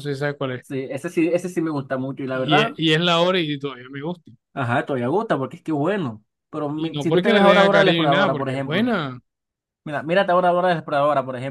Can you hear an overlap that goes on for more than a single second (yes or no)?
yes